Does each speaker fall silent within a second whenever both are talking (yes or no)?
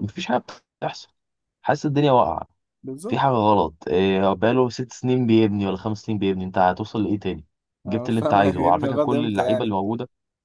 no